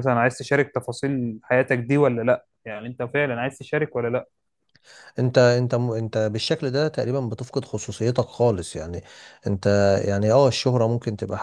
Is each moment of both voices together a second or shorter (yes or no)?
yes